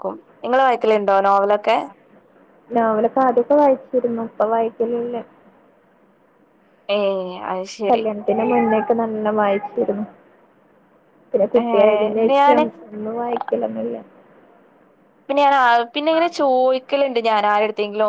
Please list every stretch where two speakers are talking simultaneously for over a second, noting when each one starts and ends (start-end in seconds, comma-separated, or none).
none